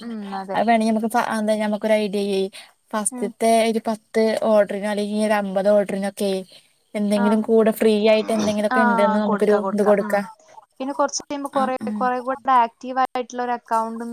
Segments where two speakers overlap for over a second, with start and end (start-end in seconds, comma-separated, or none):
none